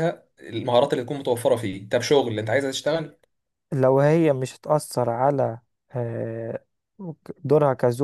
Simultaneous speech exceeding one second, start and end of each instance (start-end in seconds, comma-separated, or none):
none